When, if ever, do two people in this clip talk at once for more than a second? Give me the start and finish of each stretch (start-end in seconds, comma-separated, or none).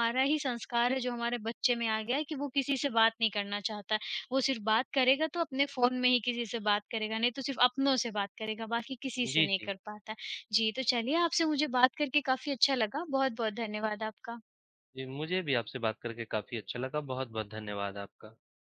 none